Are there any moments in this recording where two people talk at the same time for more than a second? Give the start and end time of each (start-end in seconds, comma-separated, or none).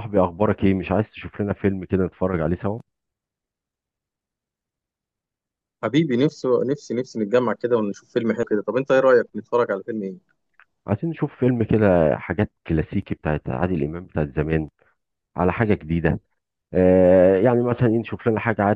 none